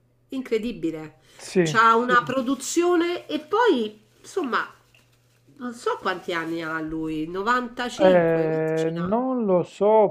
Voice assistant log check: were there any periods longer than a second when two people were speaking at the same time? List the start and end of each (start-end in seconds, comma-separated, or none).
8.0-9.2